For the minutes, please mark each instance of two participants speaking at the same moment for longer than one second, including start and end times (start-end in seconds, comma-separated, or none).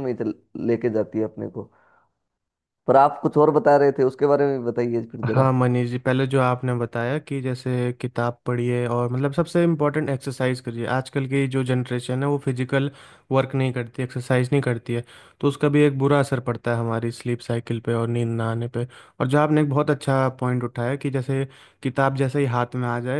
none